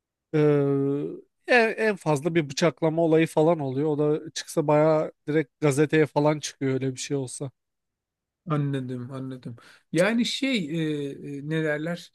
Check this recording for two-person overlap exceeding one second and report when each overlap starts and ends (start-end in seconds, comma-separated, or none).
none